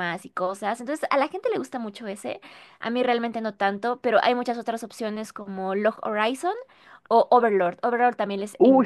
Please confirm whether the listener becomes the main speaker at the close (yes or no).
yes